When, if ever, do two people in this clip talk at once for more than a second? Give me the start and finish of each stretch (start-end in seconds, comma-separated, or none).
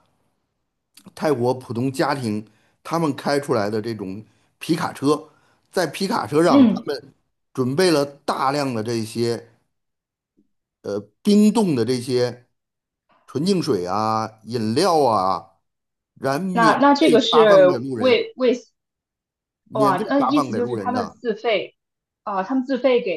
16.5-18.3, 19.7-21.1